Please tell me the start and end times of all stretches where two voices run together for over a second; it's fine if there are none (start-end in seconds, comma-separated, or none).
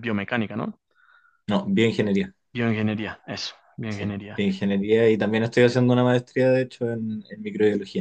none